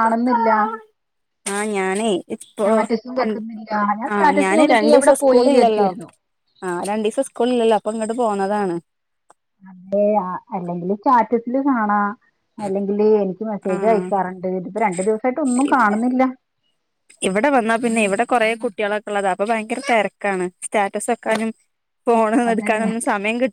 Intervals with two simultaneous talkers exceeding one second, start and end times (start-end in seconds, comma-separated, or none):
4.1-5.9